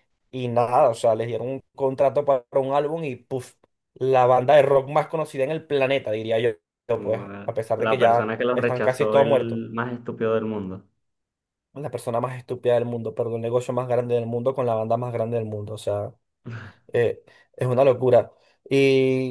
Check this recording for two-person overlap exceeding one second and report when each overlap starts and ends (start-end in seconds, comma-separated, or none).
6.9-9.6